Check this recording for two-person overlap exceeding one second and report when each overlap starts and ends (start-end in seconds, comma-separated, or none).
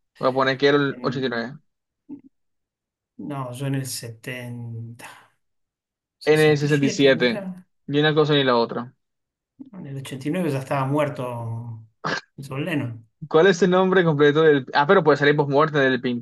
6.2-7.5